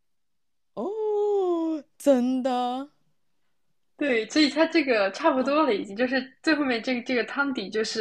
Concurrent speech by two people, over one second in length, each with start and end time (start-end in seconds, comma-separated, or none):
none